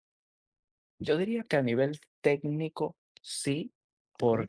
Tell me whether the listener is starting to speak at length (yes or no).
no